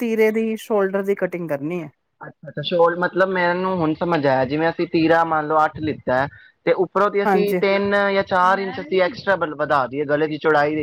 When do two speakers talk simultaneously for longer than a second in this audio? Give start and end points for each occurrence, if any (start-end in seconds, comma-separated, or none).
none